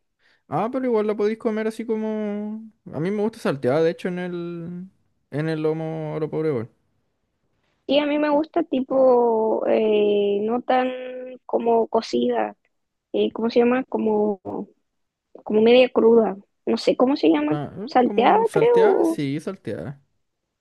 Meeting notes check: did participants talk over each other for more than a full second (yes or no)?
yes